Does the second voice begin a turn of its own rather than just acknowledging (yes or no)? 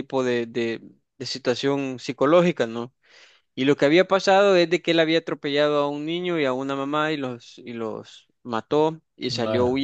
no